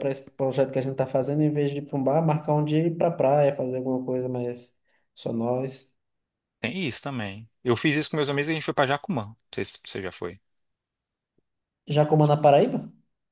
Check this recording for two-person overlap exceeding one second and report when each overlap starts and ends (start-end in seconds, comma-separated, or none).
none